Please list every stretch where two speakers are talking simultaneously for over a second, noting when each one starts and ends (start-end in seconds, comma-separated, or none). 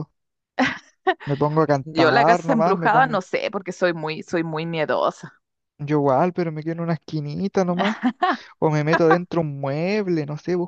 1.8-3.1